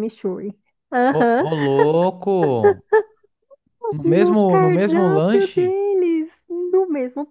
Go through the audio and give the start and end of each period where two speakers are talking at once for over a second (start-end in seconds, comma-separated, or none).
4.0-5.7